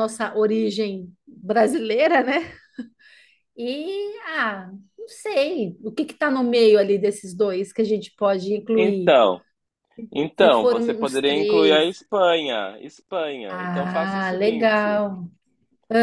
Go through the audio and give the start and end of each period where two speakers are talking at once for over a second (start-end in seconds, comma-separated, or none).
10.4-12.0, 13.5-15.0